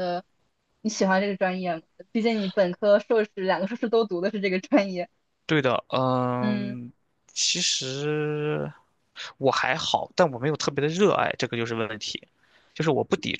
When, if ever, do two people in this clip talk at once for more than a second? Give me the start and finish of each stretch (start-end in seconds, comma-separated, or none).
none